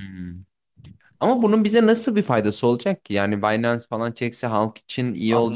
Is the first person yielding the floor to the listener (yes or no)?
yes